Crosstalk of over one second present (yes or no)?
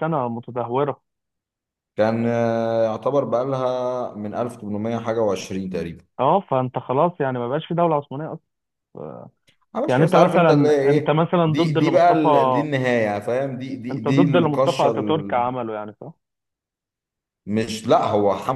yes